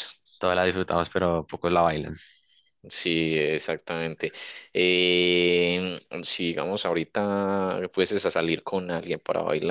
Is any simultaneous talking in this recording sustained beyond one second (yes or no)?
no